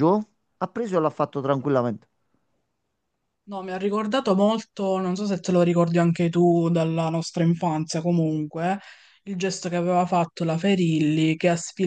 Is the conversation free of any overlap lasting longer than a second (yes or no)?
yes